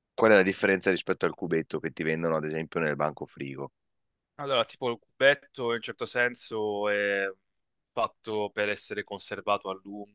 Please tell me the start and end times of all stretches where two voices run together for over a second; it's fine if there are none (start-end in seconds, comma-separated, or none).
none